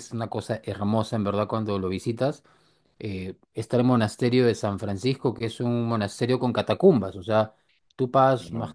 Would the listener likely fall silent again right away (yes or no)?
yes